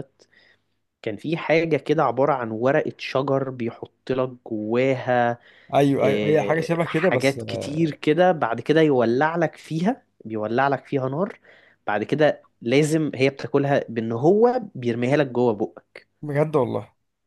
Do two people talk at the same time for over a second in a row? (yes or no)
yes